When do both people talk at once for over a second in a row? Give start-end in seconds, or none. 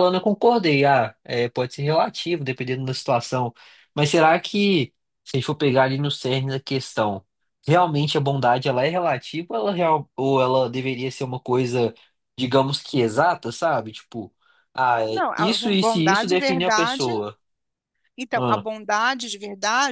15.1-17.1